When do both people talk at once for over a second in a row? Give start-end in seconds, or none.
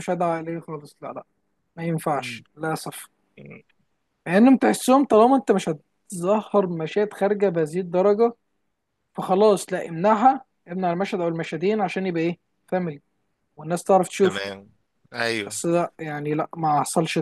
none